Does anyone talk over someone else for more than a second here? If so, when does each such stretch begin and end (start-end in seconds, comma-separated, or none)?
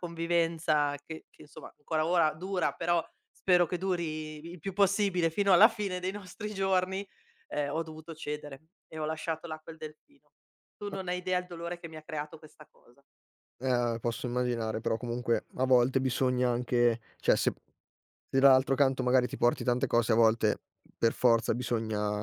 none